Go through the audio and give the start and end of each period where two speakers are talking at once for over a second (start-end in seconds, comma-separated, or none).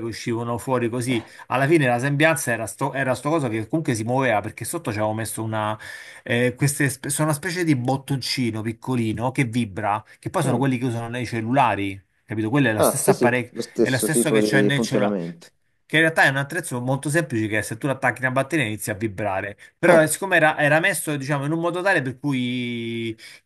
12.8-15.2